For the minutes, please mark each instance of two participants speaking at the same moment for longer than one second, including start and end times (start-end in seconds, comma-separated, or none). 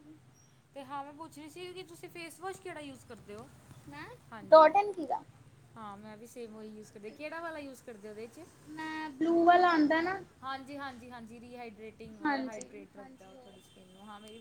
12.3-13.6